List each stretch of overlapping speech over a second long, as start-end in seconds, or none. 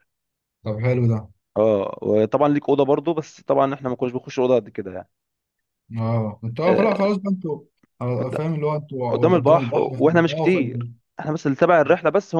9.1-10.9